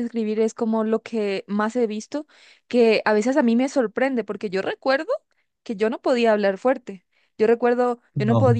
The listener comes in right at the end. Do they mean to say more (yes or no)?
no